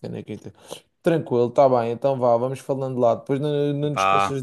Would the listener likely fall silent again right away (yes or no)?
yes